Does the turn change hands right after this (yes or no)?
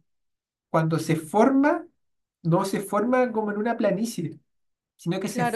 yes